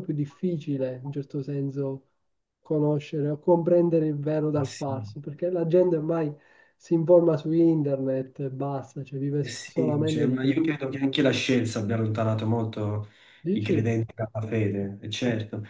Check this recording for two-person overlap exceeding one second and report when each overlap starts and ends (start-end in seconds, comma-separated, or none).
9.4-10.7